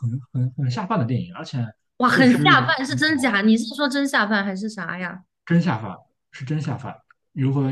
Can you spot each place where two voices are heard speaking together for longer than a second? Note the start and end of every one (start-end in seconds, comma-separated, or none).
2.1-3.4